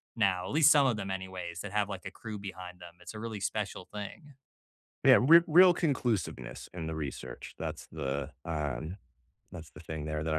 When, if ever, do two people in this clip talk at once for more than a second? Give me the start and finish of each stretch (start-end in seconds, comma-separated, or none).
none